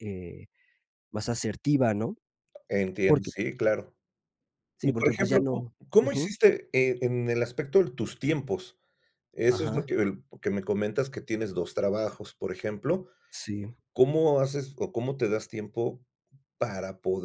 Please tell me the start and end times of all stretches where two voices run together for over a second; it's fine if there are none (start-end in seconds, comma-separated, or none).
4.8-6.3